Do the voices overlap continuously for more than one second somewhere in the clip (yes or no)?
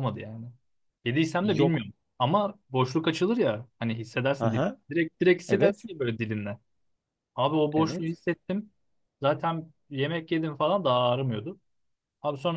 no